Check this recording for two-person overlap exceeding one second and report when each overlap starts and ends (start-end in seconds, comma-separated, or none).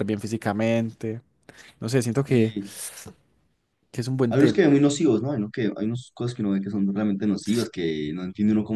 none